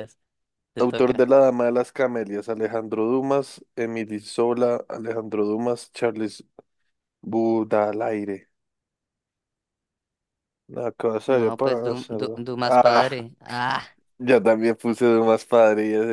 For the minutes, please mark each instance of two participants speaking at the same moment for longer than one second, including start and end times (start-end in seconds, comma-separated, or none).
11.2-13.0